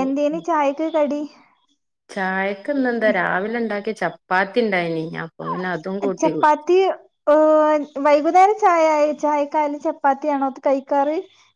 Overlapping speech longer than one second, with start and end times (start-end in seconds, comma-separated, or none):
none